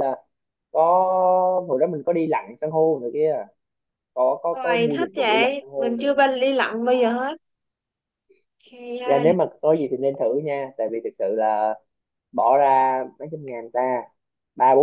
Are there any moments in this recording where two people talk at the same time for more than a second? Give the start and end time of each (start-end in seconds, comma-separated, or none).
4.5-6.2